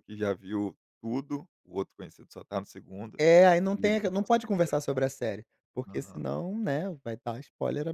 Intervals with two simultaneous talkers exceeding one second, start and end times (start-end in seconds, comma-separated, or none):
3.8-5.0